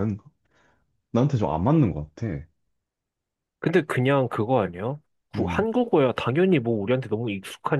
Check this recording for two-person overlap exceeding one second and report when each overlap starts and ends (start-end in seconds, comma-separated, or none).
none